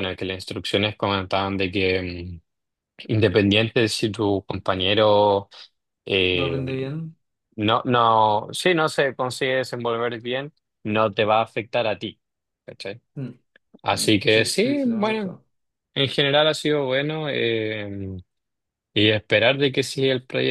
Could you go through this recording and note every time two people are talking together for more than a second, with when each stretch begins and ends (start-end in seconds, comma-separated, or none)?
13.9-15.3